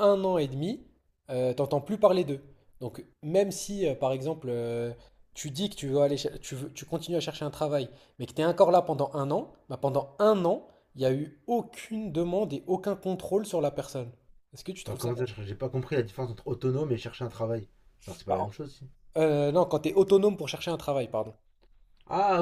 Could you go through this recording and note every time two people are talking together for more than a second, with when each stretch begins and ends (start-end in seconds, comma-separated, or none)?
none